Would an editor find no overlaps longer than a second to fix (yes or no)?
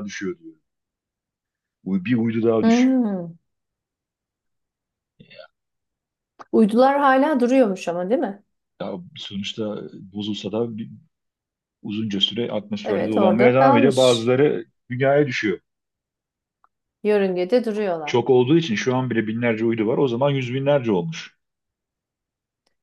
no